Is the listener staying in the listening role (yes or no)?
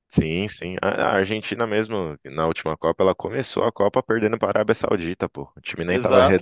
no